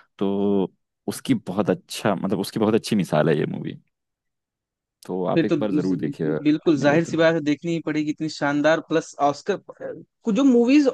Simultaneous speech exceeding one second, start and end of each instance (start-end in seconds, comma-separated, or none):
5.3-7.2